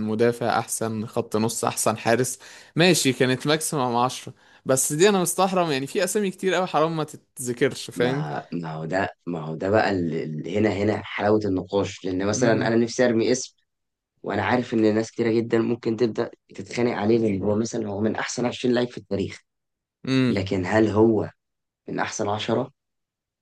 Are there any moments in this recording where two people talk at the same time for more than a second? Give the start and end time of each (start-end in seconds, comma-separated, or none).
none